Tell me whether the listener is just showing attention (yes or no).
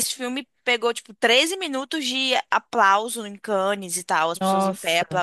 yes